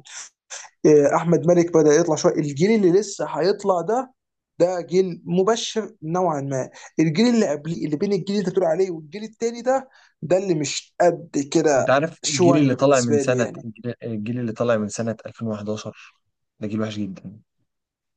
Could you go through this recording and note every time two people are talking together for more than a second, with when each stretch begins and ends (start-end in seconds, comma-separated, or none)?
11.8-13.7